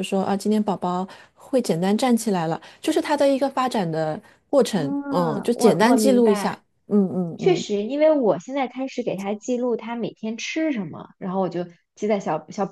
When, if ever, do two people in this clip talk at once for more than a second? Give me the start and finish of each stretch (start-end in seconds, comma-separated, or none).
4.7-6.5